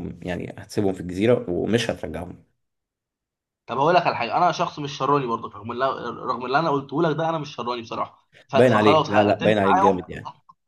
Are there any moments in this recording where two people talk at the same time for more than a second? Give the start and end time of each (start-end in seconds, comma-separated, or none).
8.5-10.0